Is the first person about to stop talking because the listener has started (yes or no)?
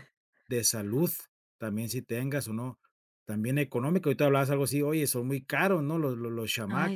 yes